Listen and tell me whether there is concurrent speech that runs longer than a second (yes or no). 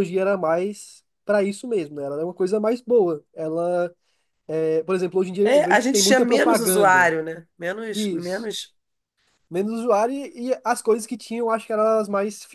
yes